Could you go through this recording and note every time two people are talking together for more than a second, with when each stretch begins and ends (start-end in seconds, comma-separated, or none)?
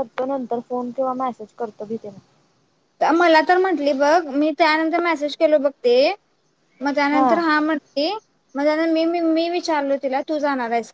none